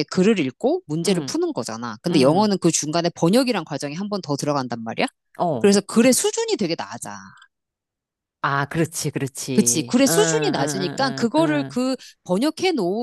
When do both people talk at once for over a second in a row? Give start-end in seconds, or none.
9.5-11.8